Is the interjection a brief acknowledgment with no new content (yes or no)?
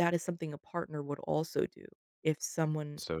yes